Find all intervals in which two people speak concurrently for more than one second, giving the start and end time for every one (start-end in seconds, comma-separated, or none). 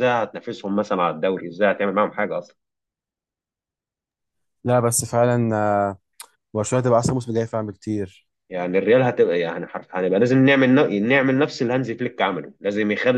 none